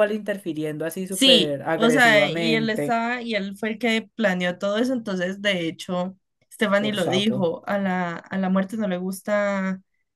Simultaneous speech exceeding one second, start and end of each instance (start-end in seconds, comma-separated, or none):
1.1-3.0